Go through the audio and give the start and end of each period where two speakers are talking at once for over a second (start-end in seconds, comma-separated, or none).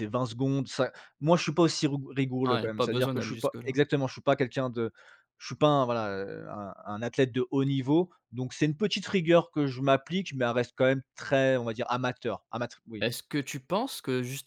2.5-3.8